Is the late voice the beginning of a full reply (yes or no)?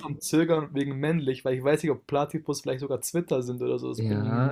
yes